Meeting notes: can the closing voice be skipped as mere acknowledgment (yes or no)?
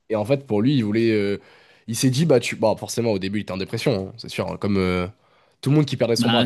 no